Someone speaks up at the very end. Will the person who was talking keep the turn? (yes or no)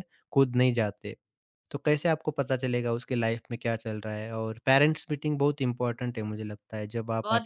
no